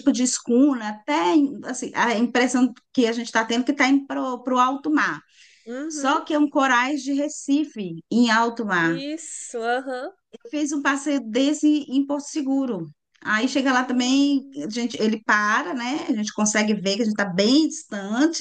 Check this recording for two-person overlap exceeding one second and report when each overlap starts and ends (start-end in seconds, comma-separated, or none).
13.7-15.0